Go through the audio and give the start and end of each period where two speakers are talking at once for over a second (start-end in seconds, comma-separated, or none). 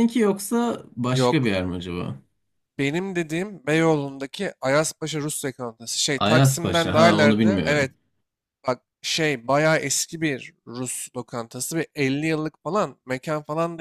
6.2-7.9